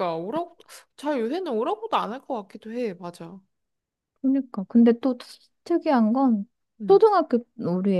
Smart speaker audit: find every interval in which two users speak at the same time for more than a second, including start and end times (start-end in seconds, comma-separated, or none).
none